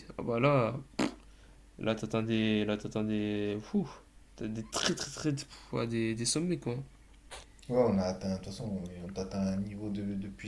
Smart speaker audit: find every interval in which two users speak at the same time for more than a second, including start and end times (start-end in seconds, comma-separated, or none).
none